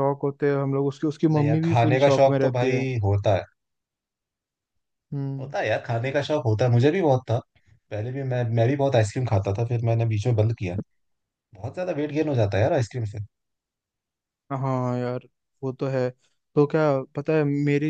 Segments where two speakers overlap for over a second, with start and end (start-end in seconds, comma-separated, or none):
1.3-2.9